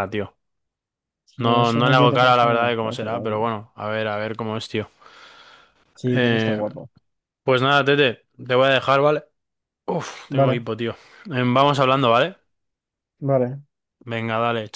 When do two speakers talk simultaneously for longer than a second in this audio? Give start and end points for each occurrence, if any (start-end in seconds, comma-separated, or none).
1.4-3.5